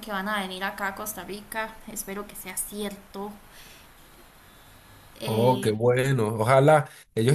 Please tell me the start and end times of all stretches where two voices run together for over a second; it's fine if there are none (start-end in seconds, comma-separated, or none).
none